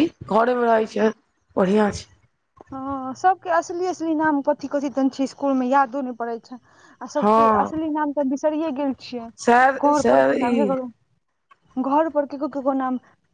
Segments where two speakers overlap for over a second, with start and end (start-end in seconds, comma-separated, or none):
9.4-10.9